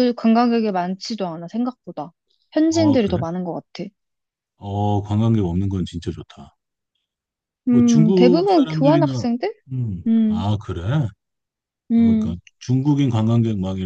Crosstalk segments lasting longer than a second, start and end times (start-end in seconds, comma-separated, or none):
7.7-9.2